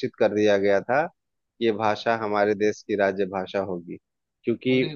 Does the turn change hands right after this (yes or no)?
no